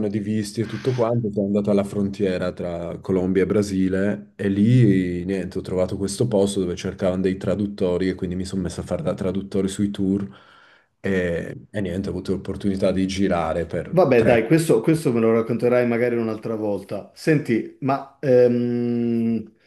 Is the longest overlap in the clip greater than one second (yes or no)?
no